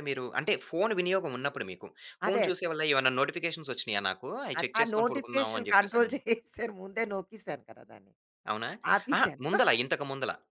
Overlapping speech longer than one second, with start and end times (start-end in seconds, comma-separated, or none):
4.6-6.1